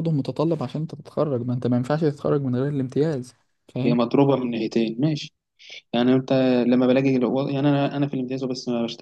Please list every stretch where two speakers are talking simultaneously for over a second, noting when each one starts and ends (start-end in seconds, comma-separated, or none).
none